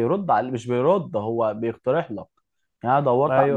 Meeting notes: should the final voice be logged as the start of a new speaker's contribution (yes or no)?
no